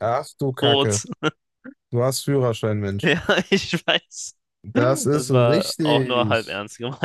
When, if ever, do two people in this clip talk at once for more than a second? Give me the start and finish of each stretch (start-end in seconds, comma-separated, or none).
5.1-6.5